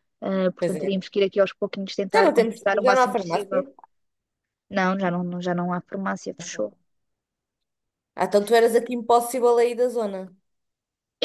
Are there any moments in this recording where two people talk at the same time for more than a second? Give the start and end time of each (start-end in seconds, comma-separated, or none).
2.1-3.6